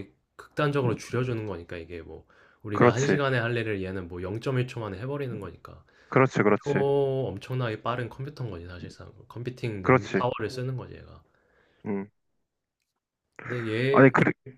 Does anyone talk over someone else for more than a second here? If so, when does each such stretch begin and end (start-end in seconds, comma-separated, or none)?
none